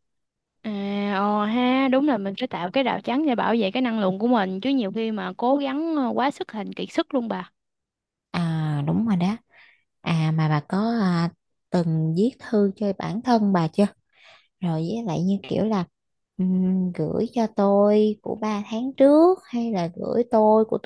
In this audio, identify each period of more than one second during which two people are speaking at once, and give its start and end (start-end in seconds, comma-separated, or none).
none